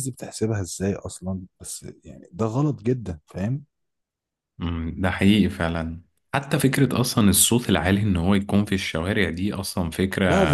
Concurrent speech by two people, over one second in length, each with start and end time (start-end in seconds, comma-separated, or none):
none